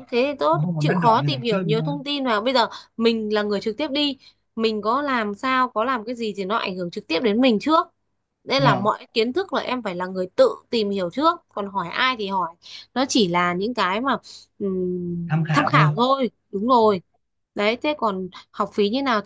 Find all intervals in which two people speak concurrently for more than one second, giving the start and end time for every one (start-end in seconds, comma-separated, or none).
0.5-1.9